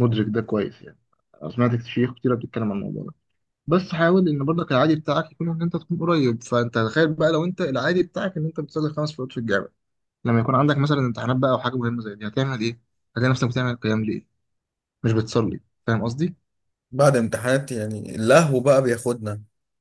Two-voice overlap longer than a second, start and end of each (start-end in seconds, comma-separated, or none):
none